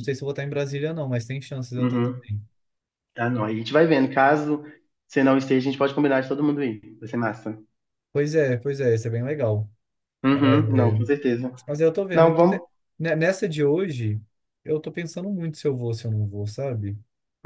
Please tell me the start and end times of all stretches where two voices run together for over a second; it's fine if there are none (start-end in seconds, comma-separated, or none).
none